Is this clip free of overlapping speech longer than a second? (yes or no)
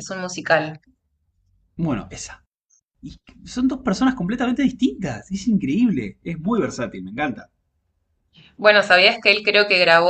yes